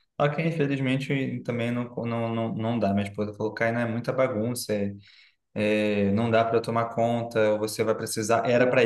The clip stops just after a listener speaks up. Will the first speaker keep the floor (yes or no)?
yes